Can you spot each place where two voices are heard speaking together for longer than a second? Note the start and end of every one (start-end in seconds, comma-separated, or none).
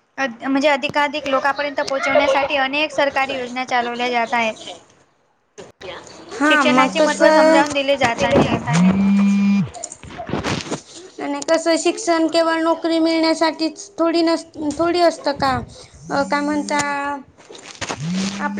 6.5-7.8